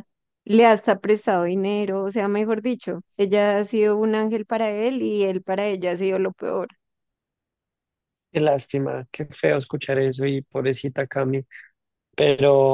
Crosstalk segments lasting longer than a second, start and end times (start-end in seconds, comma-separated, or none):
none